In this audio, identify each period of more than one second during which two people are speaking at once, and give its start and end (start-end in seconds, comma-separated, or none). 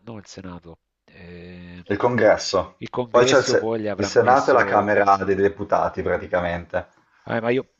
2.8-4.9